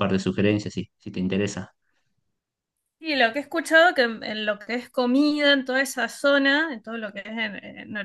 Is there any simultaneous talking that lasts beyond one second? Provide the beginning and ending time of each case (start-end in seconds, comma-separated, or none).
none